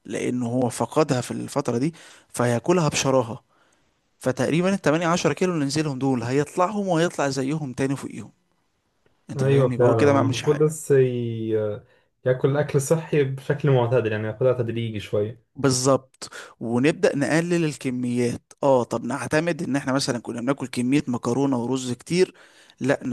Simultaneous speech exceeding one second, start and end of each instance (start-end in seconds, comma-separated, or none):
9.4-10.7